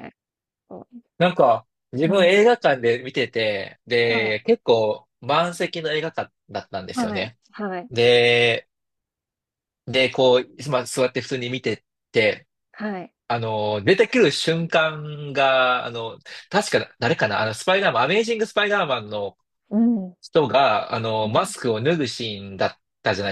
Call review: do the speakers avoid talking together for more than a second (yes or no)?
yes